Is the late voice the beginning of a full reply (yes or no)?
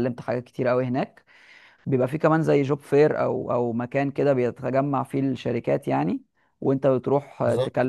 no